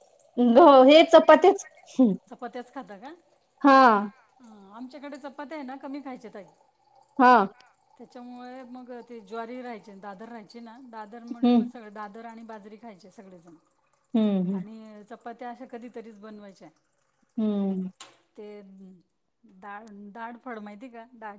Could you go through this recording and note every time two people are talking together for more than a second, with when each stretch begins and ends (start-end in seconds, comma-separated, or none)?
none